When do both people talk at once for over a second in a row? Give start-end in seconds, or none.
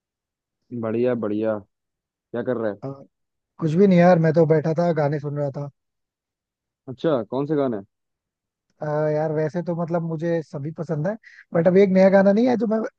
none